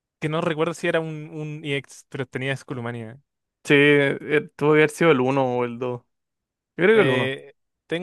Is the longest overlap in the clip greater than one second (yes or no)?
no